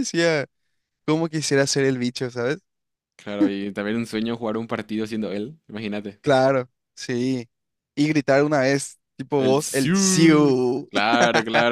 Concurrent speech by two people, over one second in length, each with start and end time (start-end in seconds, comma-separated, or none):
9.3-10.9